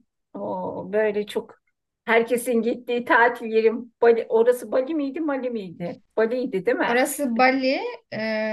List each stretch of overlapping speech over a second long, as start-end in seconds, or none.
none